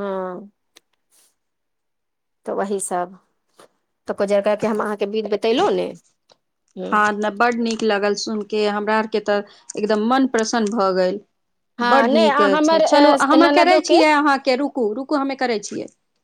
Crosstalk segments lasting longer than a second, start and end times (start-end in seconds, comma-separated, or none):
11.9-14.0